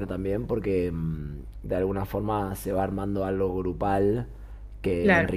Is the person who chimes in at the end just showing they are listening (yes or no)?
yes